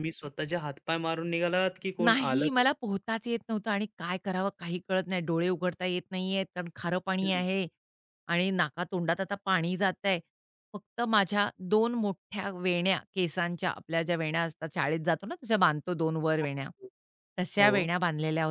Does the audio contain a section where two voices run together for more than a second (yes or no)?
no